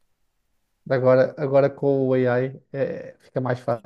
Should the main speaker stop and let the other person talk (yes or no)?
yes